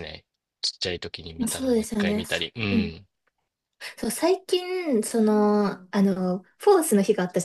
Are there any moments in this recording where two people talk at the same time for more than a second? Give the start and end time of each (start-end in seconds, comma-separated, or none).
1.4-3.0